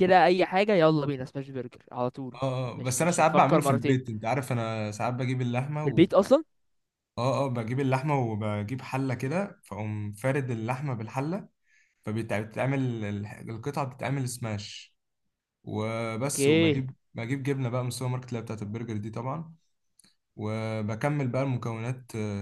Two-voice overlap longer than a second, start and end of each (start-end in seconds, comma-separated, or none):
2.8-4.0